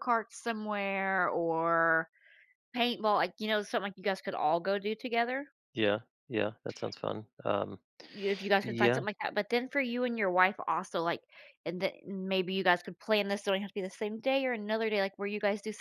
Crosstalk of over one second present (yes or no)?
no